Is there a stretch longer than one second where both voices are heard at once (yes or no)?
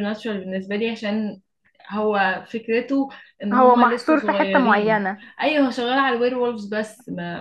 yes